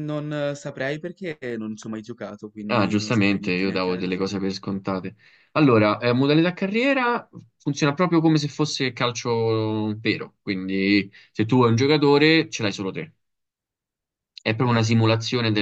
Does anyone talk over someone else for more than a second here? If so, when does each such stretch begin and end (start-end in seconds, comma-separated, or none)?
2.7-4.5